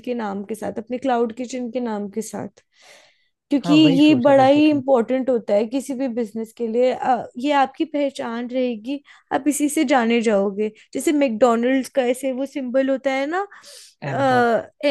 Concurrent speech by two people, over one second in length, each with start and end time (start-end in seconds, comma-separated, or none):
3.6-4.8